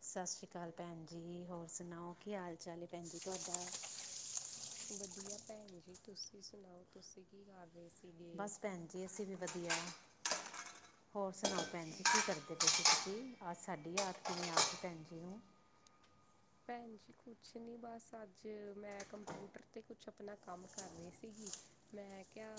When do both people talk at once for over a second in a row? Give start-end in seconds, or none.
none